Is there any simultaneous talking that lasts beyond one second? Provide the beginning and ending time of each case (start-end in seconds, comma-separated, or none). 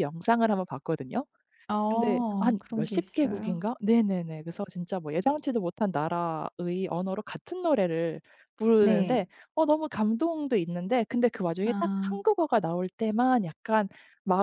1.9-3.6